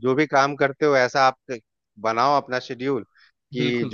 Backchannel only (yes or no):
yes